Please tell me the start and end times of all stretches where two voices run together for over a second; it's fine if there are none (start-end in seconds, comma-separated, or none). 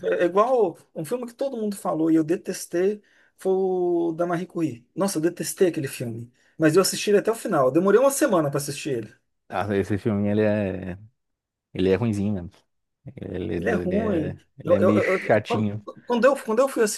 13.6-15.8